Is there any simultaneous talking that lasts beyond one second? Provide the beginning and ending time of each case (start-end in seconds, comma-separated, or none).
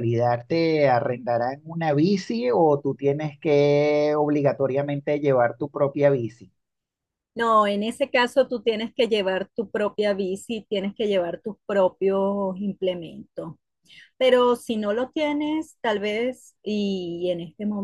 none